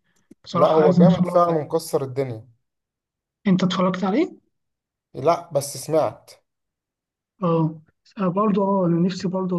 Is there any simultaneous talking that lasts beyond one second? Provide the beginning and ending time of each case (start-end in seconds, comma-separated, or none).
0.5-1.8